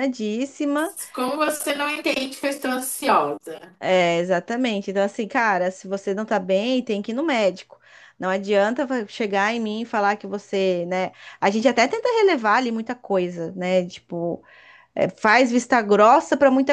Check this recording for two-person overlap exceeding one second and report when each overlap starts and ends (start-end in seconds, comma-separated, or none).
none